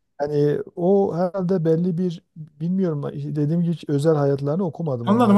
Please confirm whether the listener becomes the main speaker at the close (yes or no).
yes